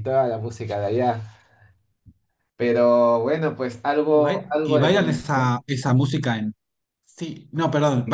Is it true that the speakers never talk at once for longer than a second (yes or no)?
no